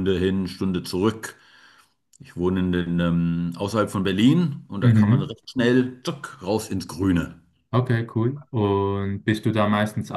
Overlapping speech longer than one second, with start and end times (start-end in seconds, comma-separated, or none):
none